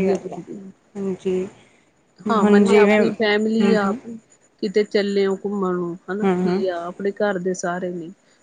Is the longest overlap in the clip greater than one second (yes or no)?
yes